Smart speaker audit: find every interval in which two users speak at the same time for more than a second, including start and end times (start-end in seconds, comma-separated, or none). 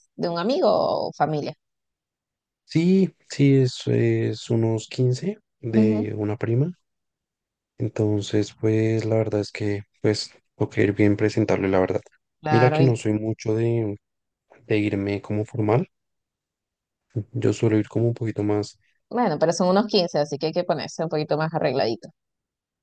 none